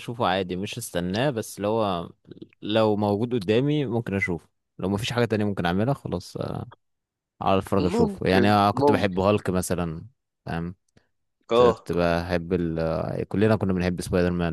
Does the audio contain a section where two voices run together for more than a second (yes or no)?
yes